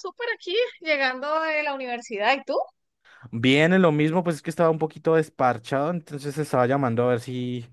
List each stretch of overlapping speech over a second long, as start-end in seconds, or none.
none